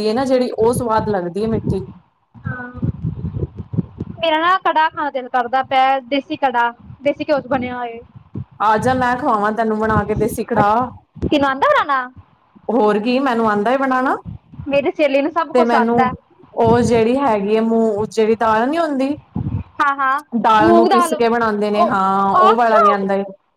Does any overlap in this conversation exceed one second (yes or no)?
yes